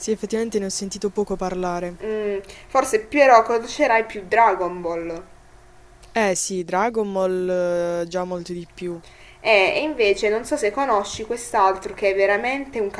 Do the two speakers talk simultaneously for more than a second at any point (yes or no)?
no